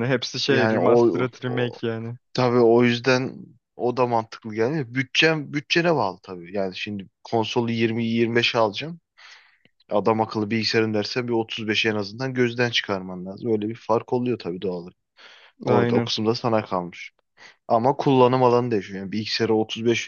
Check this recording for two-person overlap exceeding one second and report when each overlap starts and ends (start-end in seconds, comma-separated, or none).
0.5-1.8